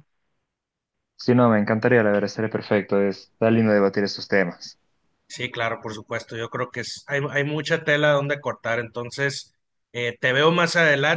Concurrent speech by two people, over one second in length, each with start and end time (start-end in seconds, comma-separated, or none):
none